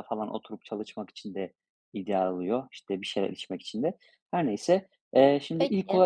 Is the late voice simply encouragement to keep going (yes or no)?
yes